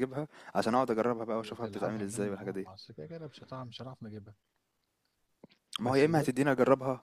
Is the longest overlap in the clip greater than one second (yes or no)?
yes